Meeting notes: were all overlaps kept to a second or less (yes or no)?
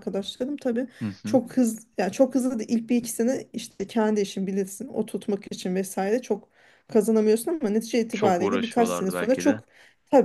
no